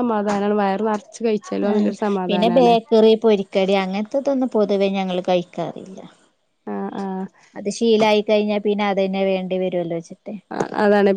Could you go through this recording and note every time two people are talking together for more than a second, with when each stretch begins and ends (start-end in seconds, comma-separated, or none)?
none